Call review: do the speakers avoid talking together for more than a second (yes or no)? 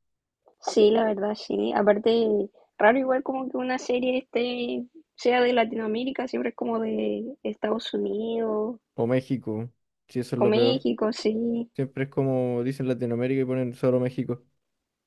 yes